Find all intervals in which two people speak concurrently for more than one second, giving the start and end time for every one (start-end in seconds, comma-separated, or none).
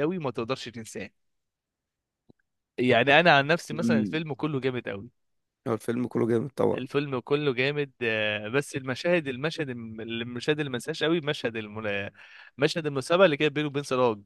none